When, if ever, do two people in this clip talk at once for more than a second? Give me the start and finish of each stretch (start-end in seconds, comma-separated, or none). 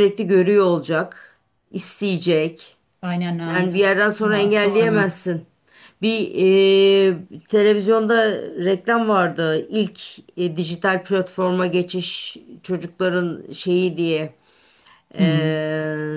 3.5-5.0